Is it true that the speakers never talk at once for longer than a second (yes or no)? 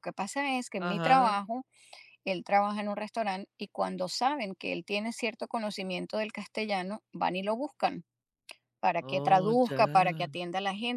no